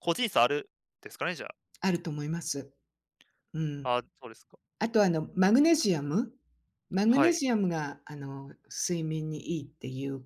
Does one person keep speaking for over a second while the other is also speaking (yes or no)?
no